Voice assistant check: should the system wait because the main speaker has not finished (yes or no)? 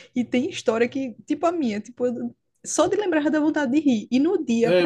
yes